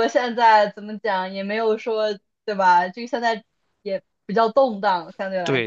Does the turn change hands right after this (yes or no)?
yes